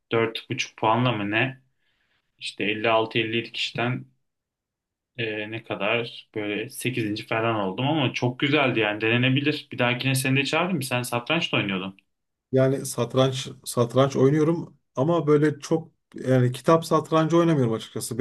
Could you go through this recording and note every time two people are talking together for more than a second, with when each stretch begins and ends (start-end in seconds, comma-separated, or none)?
none